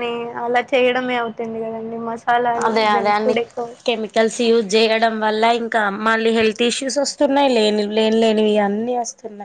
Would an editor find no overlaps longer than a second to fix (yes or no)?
yes